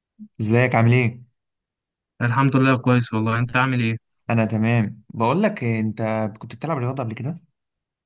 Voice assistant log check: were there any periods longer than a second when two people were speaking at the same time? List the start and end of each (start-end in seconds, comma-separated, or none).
none